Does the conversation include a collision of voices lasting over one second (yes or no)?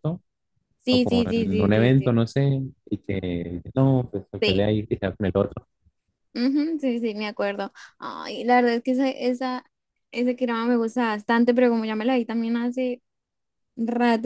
yes